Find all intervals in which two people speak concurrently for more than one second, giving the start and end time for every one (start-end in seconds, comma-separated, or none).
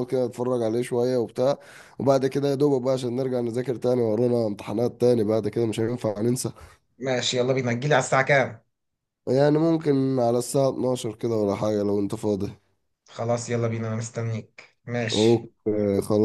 none